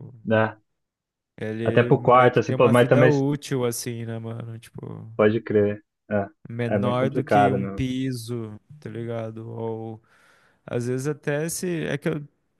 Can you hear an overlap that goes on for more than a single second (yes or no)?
yes